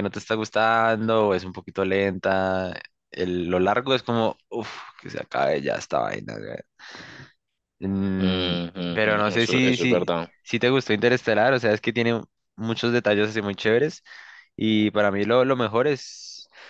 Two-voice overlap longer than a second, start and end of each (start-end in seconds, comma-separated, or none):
8.9-10.3